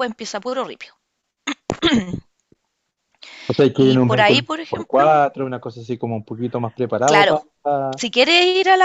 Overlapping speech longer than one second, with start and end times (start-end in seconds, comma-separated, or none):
3.8-5.2